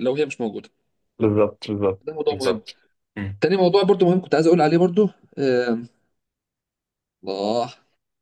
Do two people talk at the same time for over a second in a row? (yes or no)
no